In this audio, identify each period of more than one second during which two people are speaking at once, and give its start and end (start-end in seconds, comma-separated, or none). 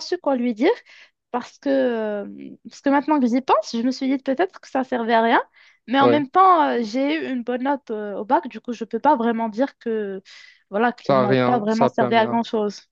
11.1-12.4